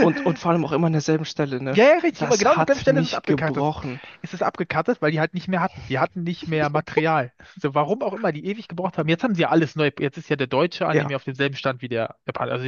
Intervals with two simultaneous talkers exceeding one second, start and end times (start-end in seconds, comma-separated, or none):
1.7-3.7